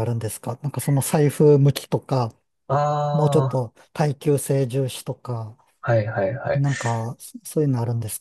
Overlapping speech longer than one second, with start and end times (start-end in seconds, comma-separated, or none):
none